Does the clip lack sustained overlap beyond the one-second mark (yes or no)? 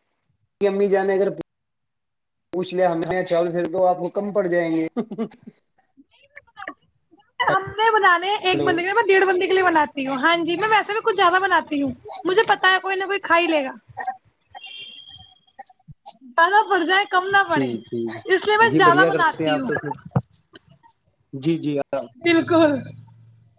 no